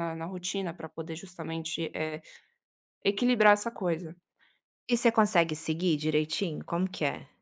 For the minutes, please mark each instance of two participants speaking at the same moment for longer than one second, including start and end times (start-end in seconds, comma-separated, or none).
none